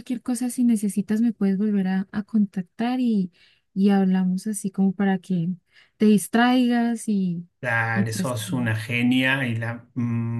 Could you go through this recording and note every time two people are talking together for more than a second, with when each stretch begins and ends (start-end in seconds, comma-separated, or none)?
none